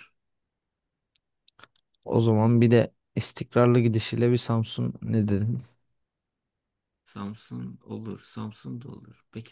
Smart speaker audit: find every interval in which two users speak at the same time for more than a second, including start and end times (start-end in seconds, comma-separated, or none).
none